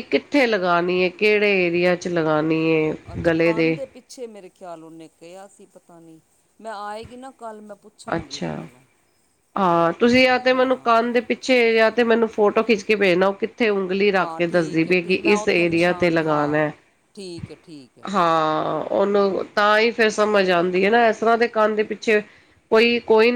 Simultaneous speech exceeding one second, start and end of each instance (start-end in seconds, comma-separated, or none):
14.2-16.7